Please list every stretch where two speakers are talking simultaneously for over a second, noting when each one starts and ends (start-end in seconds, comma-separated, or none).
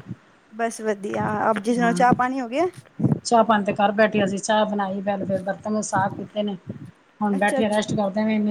none